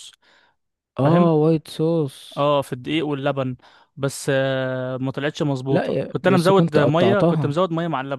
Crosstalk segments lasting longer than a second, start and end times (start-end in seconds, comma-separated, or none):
5.7-7.6